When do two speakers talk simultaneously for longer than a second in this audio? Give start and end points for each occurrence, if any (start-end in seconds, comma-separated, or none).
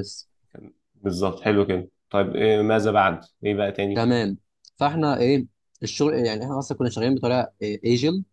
none